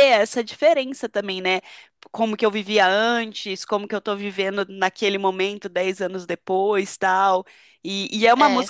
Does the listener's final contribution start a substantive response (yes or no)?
no